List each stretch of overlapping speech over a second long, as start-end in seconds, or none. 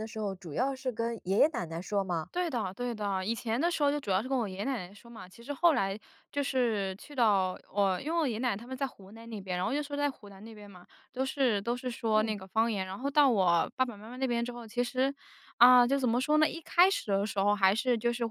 none